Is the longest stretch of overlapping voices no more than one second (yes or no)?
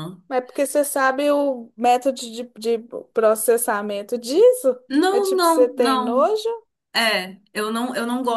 no